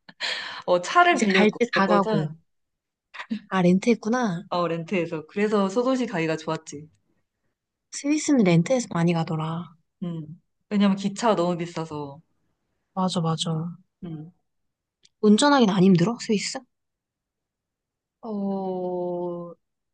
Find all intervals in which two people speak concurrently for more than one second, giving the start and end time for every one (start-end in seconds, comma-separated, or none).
1.1-2.3